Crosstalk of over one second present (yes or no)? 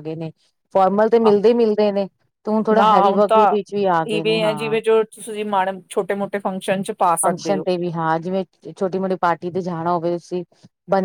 no